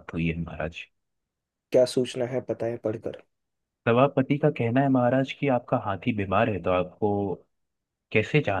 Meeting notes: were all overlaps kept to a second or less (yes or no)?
yes